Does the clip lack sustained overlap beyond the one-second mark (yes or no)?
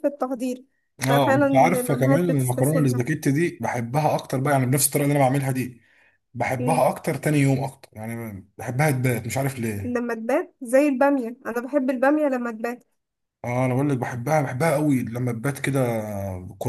no